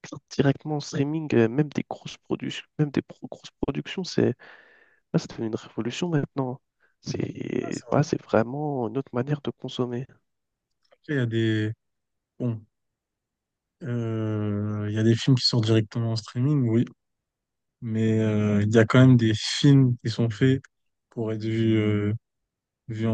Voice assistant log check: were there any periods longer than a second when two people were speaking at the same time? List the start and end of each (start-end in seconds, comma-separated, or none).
none